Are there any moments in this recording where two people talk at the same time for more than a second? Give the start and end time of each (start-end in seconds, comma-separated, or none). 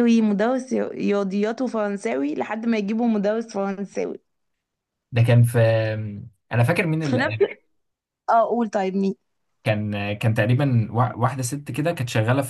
none